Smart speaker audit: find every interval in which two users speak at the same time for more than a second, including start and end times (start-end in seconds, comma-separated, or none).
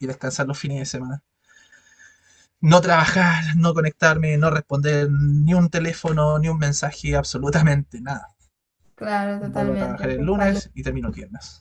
9.4-10.6